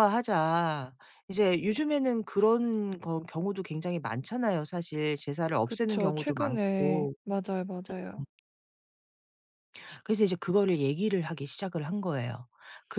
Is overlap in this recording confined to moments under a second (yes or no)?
no